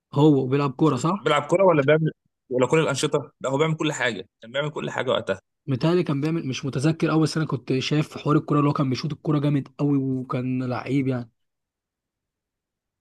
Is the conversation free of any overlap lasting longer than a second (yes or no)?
yes